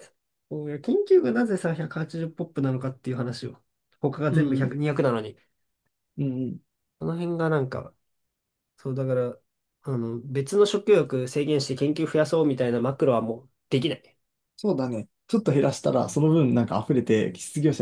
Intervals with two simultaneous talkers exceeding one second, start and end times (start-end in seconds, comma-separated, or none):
none